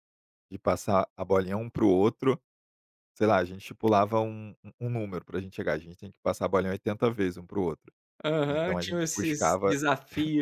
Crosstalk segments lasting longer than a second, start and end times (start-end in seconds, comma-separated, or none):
8.5-9.8